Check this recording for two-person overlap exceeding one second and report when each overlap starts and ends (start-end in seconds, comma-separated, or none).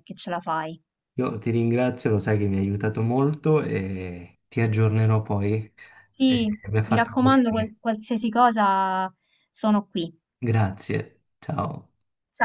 6.2-7.8